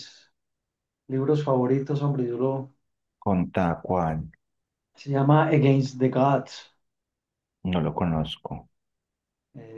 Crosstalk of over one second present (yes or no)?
no